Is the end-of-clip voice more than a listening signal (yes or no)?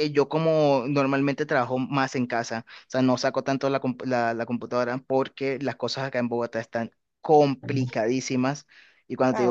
no